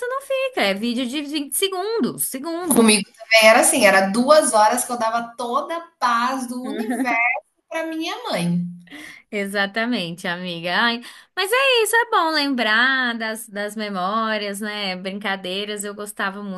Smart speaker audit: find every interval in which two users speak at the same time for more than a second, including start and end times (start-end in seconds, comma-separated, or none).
none